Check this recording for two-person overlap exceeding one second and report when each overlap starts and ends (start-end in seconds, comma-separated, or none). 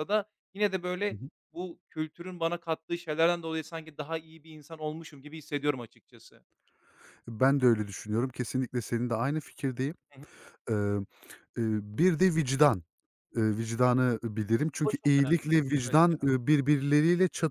14.8-16.2